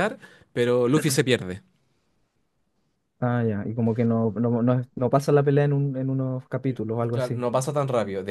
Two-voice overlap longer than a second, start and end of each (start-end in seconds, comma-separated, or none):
none